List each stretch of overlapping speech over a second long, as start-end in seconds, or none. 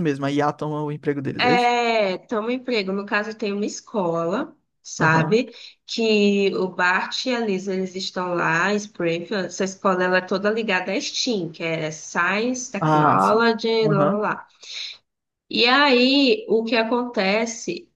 12.8-14.2